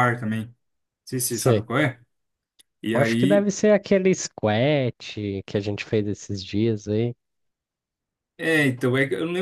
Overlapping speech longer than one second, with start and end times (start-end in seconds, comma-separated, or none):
none